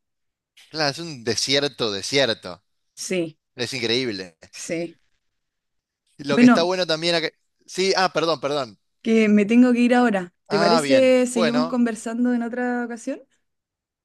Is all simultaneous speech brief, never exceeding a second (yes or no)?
no